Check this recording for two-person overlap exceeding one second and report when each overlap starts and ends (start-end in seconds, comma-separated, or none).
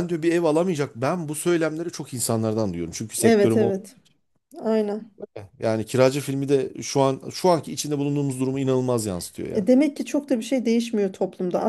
none